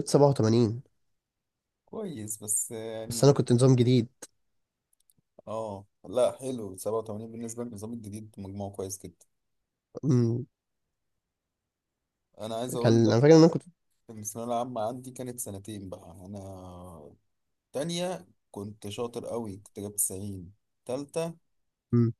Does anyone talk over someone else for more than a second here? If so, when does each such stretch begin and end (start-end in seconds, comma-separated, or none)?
none